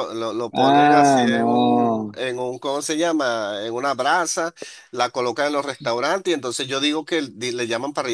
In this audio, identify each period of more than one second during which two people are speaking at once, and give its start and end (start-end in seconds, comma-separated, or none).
0.5-2.2